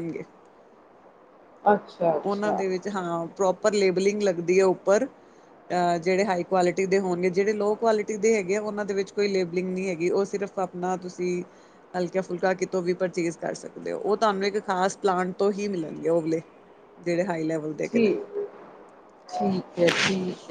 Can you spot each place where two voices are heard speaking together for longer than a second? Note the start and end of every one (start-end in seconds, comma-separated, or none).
none